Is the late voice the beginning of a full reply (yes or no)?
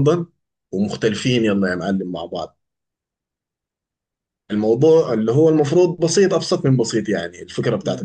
no